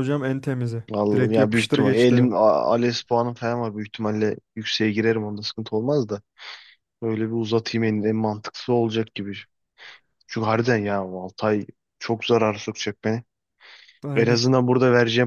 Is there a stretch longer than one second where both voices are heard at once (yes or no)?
yes